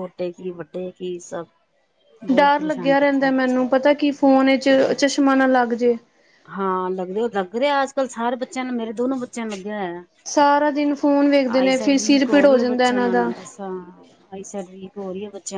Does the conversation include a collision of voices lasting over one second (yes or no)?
yes